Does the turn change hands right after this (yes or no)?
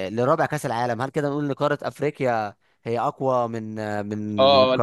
yes